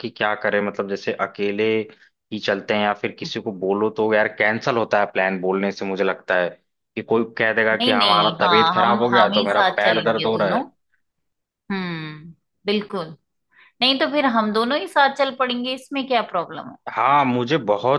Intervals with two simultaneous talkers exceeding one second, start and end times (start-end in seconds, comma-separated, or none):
7.7-10.6